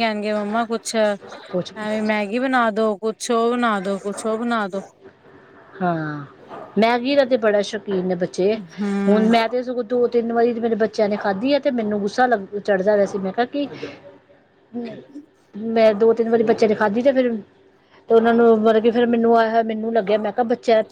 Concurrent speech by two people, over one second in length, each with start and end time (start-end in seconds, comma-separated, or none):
none